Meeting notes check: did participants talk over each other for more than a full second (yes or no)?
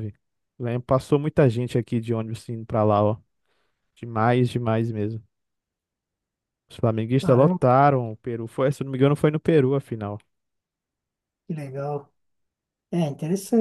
no